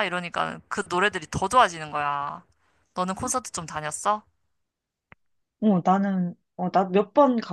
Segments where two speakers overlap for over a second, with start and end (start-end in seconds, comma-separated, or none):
none